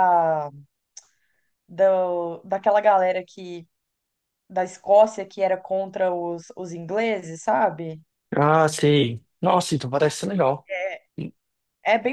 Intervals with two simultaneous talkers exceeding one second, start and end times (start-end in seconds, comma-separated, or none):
none